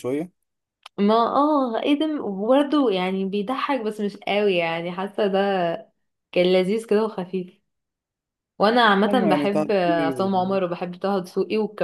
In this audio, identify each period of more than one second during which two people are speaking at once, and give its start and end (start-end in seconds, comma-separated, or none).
9.1-10.6